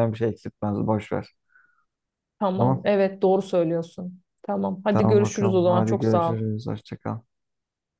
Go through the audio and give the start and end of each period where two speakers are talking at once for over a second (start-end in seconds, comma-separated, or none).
4.9-6.4